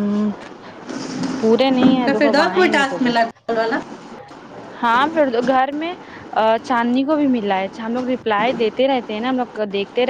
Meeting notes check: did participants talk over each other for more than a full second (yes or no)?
yes